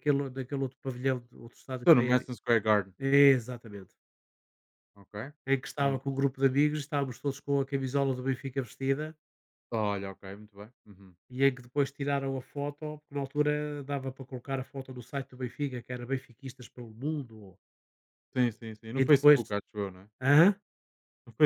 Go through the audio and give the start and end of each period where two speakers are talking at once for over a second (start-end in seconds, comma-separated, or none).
none